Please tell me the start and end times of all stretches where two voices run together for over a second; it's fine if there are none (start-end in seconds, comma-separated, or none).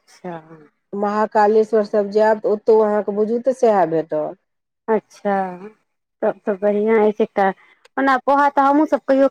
none